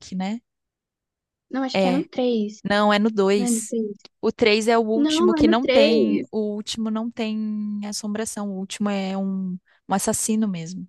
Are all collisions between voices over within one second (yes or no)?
no